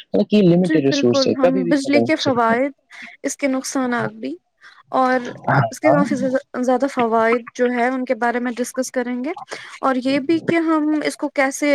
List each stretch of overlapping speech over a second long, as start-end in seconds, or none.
0.7-2.6